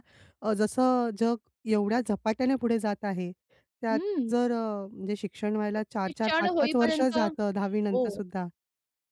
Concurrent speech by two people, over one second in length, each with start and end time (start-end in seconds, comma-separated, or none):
6.1-7.5